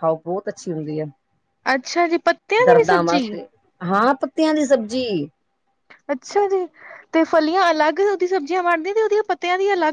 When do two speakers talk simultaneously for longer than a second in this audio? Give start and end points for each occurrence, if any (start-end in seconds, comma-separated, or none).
none